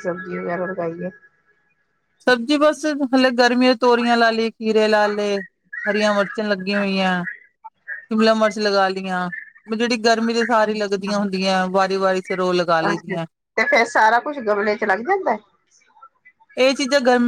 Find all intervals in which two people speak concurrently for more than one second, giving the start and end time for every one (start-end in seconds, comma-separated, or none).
none